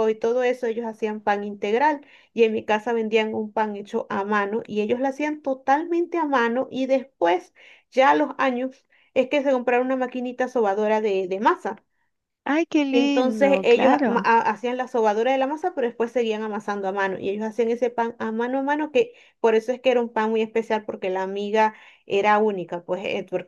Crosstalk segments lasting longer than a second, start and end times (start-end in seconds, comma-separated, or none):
12.9-14.3